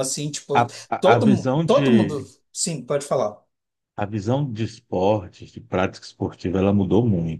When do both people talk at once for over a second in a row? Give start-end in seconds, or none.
0.5-2.3